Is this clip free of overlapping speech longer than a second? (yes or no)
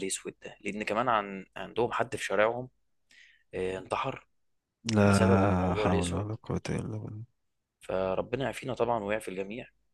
no